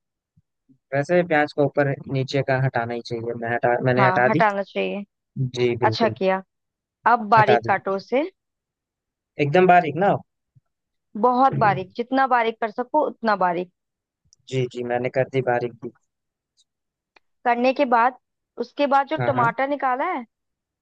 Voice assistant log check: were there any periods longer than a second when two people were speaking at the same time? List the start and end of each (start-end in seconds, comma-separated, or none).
none